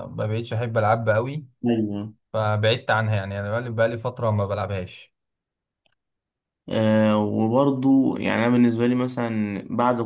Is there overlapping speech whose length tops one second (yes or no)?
no